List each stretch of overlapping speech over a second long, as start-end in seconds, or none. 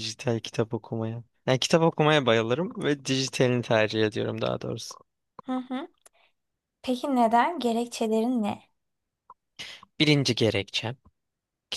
none